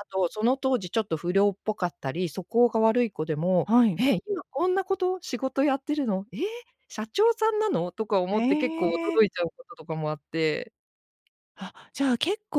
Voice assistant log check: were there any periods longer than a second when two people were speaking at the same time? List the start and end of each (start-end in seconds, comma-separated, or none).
none